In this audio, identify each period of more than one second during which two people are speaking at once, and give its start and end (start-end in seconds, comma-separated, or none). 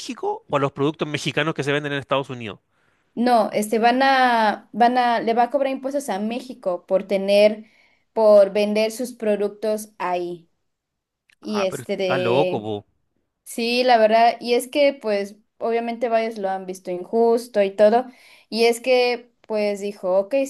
11.4-12.7